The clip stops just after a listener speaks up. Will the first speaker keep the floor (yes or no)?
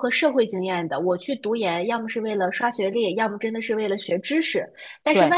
yes